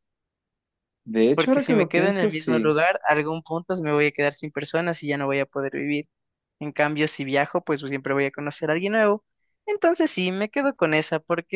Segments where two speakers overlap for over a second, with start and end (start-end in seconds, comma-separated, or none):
1.3-2.8